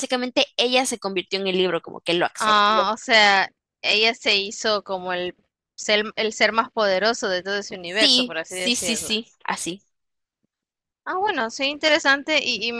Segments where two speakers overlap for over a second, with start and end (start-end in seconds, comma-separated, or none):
7.8-9.1